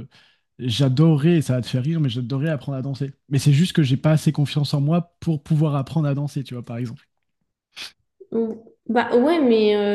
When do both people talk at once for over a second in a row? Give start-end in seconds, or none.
none